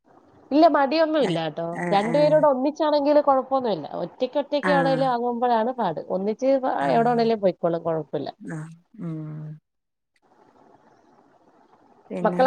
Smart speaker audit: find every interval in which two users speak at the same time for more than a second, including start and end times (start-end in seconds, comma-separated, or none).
none